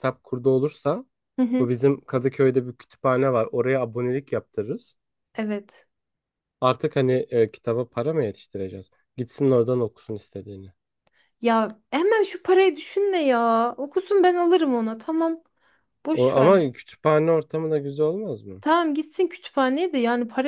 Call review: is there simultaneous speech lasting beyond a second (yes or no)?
no